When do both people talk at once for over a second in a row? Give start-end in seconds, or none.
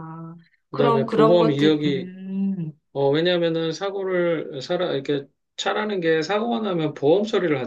0.7-2.1